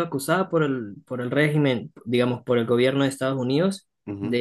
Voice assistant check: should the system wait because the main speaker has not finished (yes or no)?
yes